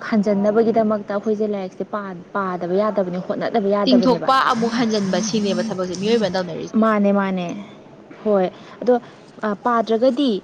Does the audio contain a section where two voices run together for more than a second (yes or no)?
no